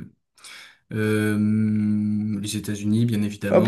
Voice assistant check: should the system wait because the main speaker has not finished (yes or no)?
no